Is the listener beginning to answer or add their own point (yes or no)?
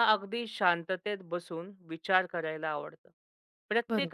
no